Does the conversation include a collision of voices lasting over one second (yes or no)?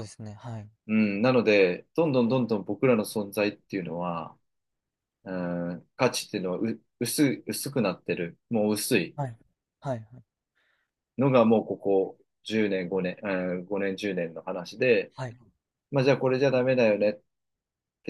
no